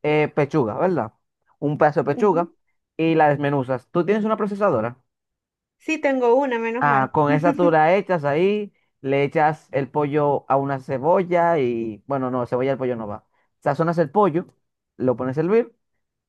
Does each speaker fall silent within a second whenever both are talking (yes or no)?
yes